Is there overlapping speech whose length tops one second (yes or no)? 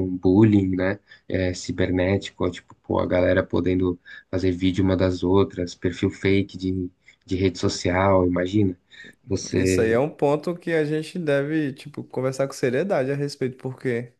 no